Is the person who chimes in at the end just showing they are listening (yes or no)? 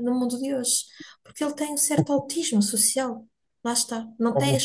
yes